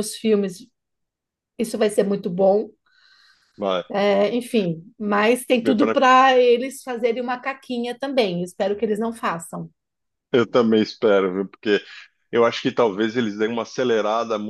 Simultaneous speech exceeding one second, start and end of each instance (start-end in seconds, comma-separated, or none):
none